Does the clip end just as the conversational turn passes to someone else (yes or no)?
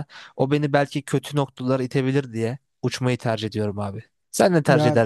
yes